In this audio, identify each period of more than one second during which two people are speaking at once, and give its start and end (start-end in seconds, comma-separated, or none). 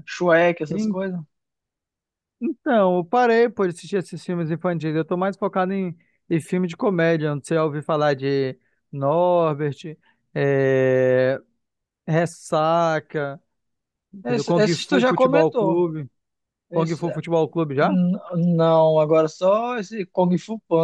14.2-15.8